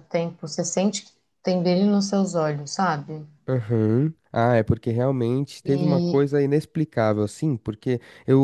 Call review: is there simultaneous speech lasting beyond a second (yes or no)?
no